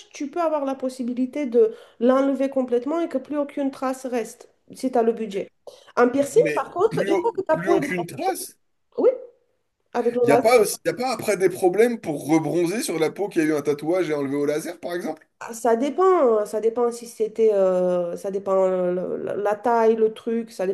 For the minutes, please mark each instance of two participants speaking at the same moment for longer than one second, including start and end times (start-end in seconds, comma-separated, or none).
6.3-7.9